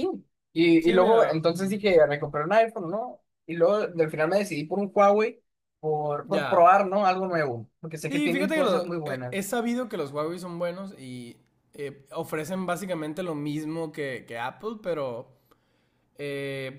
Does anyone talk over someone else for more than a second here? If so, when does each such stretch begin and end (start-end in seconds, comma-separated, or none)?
8.1-9.4